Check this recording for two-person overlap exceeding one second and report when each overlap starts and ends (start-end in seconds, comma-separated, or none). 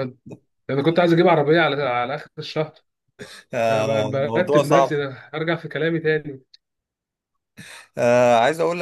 3.7-5.0